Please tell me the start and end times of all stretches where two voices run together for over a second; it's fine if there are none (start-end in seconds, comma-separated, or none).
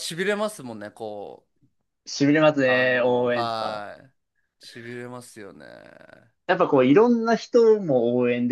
2.6-3.9